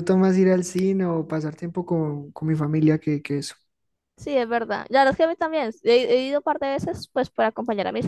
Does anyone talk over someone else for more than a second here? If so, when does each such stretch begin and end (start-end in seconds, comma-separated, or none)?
none